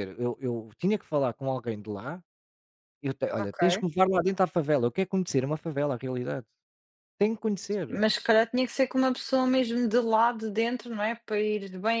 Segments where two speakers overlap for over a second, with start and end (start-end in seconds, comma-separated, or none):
none